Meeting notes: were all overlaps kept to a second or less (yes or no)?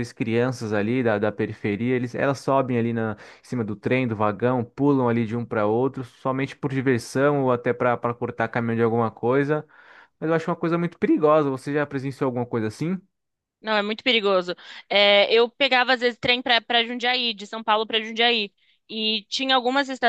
yes